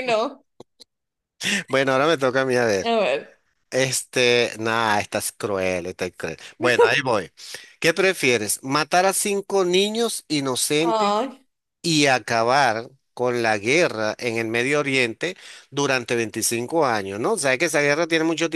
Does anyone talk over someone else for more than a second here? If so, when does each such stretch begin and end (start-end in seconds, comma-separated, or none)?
none